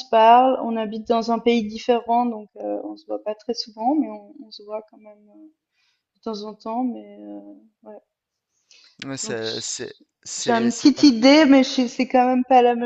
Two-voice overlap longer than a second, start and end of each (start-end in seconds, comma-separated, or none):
9.2-10.9